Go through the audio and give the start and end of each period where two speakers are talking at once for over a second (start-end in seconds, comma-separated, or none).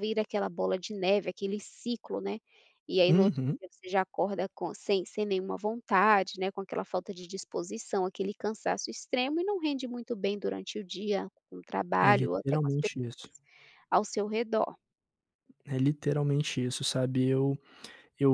12.1-13.3